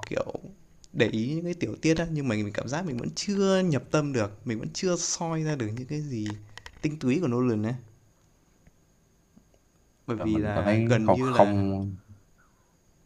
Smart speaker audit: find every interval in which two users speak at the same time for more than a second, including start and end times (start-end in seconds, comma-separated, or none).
10.2-11.7